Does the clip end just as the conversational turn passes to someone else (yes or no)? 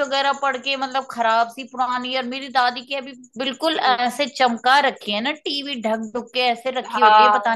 yes